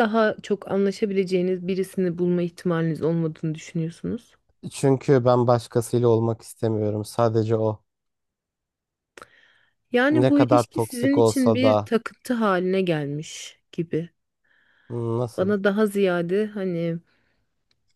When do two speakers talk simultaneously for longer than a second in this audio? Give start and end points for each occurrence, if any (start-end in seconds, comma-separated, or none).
10.1-11.9